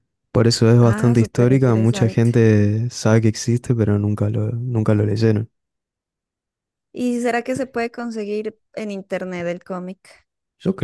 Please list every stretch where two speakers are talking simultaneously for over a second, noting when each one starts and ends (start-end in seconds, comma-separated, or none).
0.8-2.3